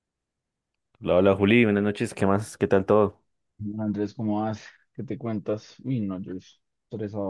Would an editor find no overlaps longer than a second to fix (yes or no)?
yes